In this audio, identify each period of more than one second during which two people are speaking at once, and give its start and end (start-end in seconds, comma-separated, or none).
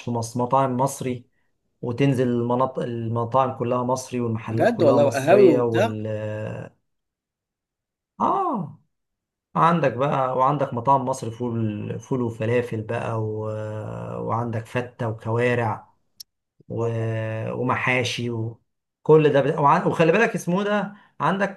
4.5-6.0